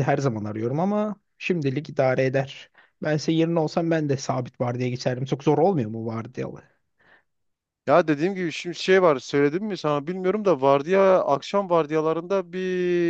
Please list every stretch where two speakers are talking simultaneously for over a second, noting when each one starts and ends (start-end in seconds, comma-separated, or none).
none